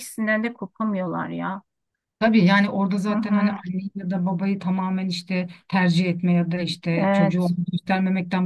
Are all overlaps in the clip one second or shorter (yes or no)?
yes